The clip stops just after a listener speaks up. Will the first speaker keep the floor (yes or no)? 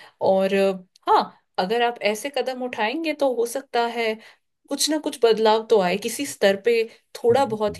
yes